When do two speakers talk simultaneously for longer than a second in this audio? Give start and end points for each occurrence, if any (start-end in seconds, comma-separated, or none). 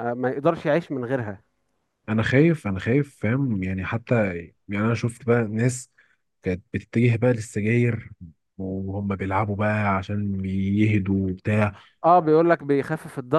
none